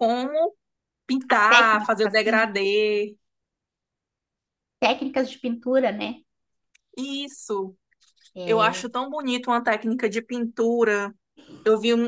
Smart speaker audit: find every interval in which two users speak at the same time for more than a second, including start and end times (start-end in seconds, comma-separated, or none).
1.3-2.5